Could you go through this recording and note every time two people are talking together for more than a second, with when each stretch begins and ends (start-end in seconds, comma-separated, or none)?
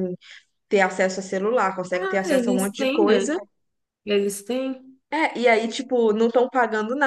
1.9-3.3